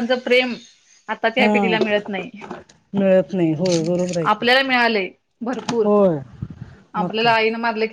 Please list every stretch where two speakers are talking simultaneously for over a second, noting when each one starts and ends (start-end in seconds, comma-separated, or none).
none